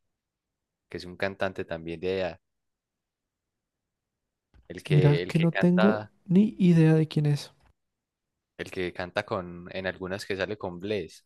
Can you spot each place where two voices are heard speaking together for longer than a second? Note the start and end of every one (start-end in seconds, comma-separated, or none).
4.9-6.1